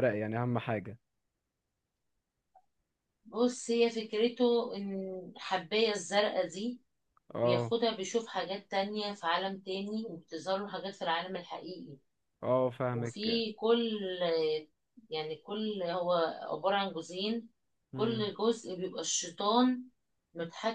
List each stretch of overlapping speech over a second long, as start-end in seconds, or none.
none